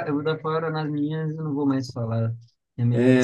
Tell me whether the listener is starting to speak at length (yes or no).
yes